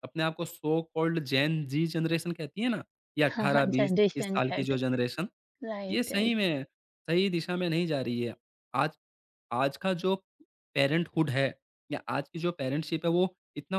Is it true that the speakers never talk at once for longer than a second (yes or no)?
no